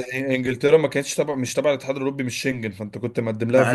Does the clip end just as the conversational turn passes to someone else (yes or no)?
yes